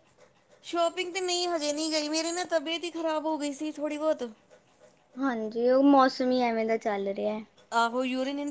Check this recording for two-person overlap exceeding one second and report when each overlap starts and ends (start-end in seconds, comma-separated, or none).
none